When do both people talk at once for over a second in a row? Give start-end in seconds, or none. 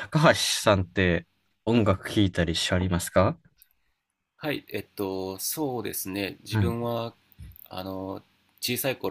none